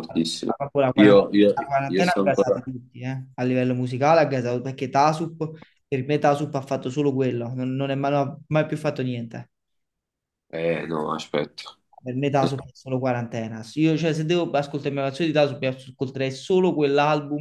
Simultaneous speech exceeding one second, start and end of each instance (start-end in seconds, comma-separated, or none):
0.9-2.7